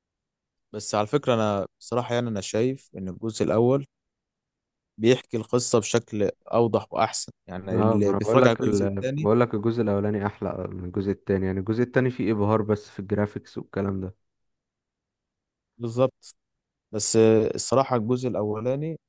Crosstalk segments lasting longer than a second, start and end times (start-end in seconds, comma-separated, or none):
7.7-9.3